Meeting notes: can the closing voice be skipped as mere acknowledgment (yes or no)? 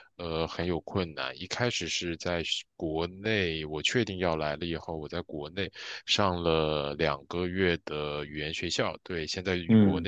yes